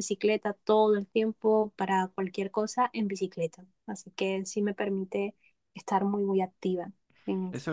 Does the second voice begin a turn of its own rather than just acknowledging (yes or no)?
yes